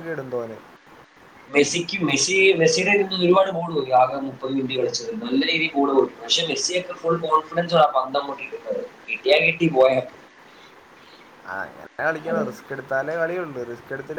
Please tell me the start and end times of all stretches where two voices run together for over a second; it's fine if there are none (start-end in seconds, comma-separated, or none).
none